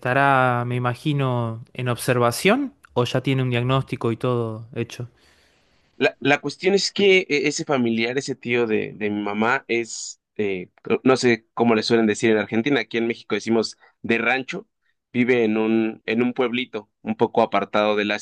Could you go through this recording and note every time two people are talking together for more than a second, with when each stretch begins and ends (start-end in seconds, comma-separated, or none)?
none